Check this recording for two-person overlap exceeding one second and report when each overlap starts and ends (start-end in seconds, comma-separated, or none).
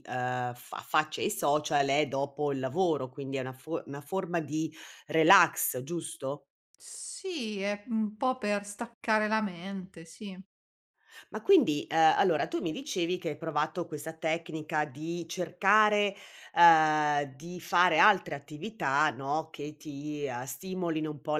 none